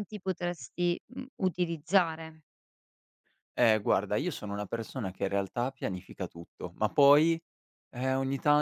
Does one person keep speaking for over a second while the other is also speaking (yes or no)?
no